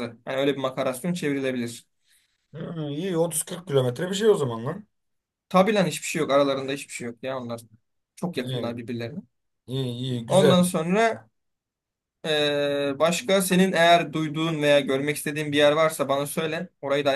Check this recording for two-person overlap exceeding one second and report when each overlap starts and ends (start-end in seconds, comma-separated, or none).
none